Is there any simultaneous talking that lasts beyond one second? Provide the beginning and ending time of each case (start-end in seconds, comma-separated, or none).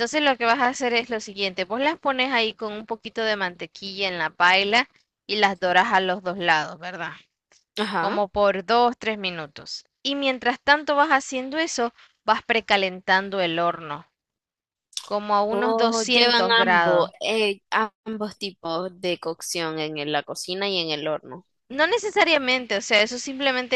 15.5-17.1